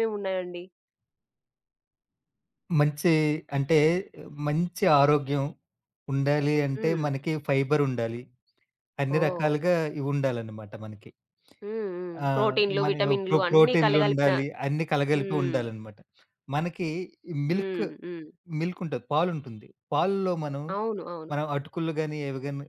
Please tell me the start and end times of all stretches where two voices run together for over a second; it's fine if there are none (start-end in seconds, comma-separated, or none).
12.3-14.3